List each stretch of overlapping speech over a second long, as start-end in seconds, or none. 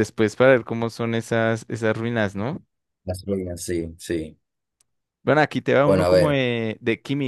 none